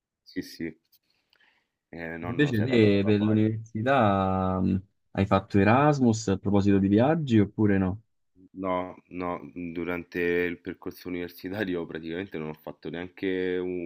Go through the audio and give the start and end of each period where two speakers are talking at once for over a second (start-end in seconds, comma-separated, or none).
2.2-3.5